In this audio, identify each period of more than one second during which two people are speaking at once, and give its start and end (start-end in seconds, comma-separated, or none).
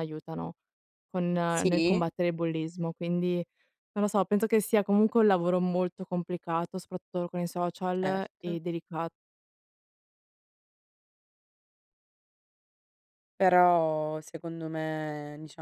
none